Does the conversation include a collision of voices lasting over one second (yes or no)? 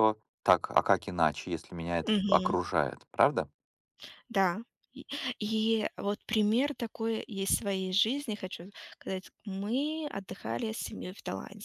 no